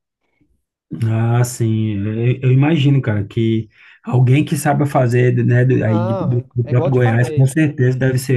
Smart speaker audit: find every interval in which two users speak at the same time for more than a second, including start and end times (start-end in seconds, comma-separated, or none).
5.8-7.6